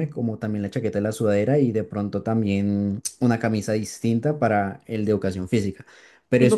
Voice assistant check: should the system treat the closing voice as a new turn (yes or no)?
yes